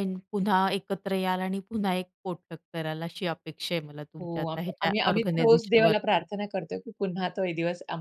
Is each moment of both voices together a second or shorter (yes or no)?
no